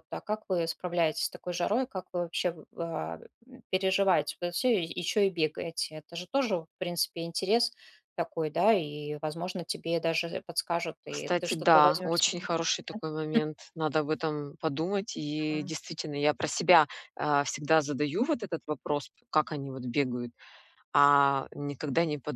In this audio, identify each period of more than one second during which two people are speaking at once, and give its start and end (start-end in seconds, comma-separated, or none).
11.1-12.5